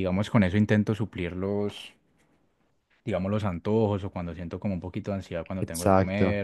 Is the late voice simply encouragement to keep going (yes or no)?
yes